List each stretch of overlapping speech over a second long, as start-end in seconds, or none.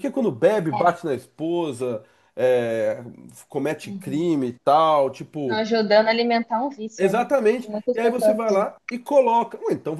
7.0-8.7